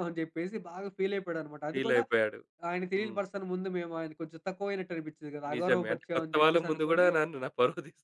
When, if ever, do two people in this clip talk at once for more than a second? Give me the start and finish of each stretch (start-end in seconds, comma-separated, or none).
5.5-7.1